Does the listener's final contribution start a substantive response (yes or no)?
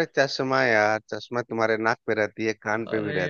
no